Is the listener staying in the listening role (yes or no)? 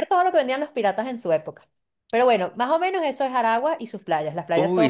no